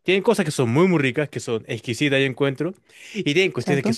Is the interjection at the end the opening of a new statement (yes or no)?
no